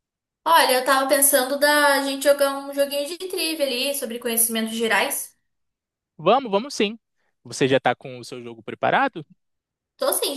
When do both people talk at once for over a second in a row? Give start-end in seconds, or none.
none